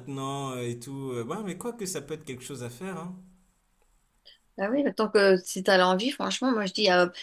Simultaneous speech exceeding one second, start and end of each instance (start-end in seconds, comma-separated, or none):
none